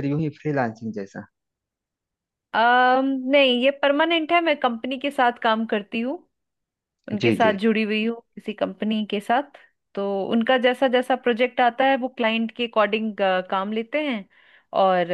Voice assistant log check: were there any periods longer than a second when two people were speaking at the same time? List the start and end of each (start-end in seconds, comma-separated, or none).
none